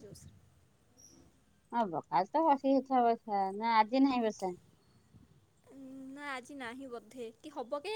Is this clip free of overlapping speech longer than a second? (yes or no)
yes